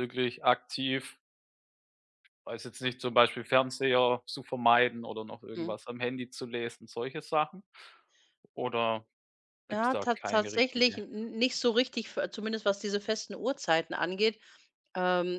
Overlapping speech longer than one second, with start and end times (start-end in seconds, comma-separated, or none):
9.7-11.0